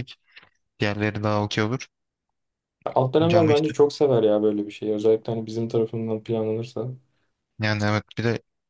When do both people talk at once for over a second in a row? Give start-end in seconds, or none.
none